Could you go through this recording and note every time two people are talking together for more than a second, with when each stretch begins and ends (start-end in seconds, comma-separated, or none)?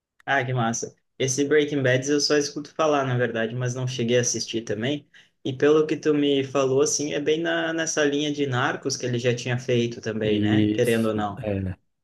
10.2-11.4